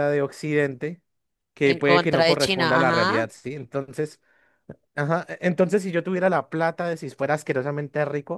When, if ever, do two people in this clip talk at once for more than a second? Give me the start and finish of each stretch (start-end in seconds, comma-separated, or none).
1.6-3.3